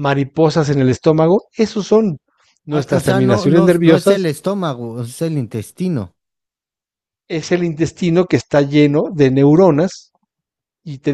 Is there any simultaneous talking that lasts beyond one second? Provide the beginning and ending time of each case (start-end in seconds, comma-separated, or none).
2.7-4.3